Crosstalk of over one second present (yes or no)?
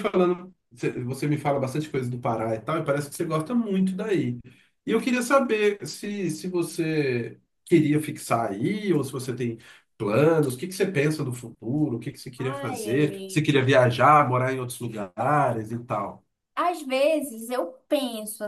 yes